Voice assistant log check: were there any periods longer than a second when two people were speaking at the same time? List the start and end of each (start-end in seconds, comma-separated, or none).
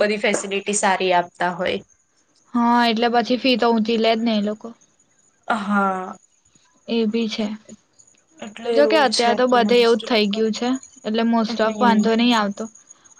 8.7-10.5